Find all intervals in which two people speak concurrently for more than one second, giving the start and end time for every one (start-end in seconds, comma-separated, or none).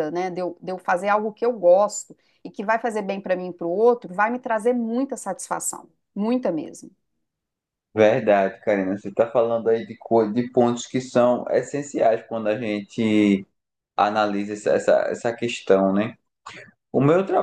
none